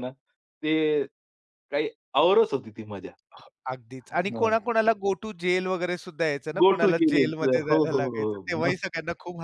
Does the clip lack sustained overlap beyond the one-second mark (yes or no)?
no